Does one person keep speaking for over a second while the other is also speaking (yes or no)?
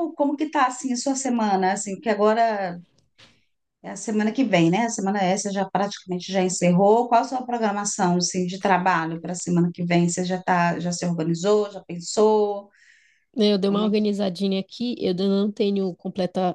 no